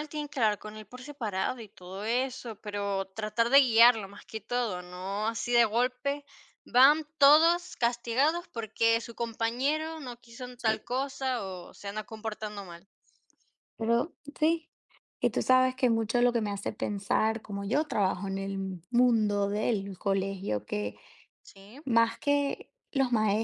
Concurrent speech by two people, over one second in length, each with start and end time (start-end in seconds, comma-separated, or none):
none